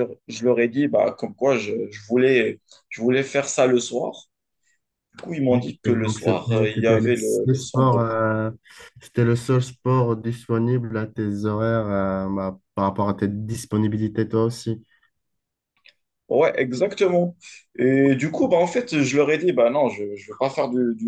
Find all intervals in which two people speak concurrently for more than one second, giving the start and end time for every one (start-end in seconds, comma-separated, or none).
5.5-8.1